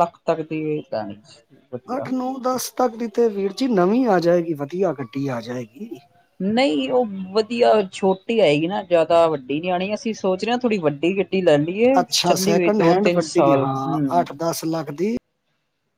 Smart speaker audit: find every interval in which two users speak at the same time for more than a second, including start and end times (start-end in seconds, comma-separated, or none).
12.2-14.2